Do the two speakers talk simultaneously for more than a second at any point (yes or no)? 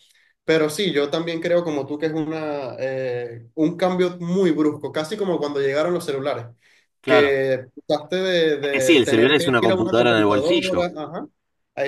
yes